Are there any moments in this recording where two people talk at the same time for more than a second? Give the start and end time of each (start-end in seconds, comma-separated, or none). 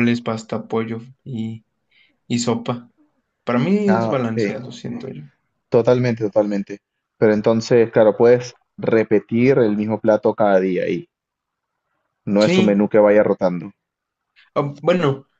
none